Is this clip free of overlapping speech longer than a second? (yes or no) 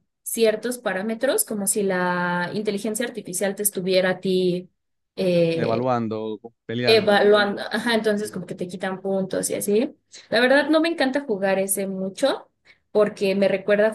yes